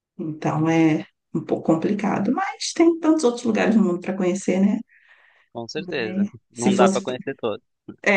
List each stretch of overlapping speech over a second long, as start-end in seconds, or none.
5.8-7.0